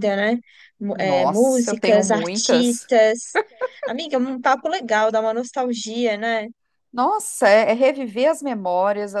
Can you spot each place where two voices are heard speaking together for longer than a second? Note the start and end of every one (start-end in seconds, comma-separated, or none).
0.9-2.9